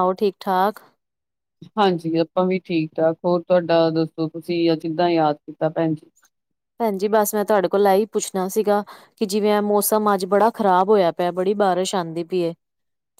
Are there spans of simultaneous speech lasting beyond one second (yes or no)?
no